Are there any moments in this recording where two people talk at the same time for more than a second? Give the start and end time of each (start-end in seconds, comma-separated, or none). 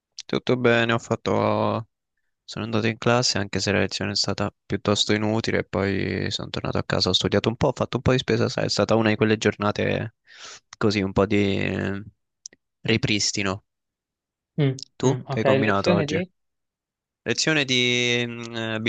15.0-16.2